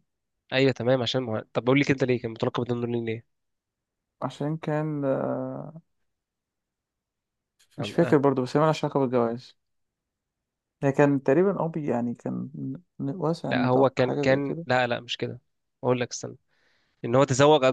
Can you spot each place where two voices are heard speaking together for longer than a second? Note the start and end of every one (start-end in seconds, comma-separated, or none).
13.4-14.7